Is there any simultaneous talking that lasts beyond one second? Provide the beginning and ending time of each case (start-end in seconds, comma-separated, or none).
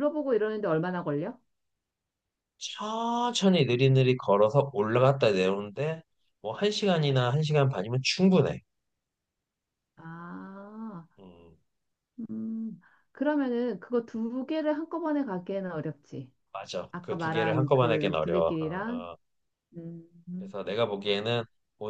16.9-19.1